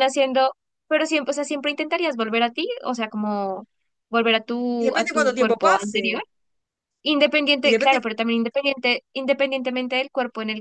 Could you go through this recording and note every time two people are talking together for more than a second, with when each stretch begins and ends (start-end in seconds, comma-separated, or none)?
4.8-6.2